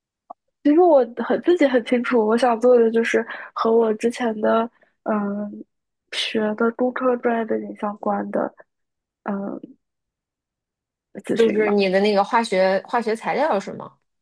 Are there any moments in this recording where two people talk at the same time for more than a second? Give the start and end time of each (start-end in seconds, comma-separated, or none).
none